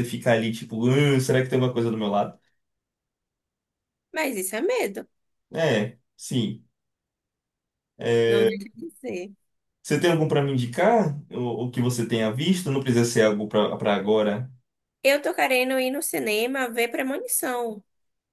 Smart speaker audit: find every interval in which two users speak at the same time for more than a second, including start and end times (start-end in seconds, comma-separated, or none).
none